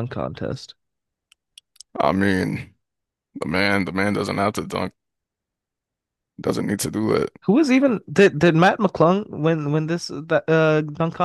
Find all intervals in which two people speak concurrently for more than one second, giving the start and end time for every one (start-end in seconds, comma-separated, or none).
none